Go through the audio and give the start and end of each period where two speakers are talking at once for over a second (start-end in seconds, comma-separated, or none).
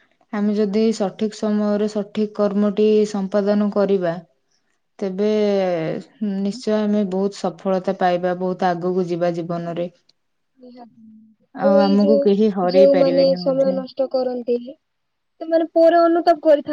11.9-13.8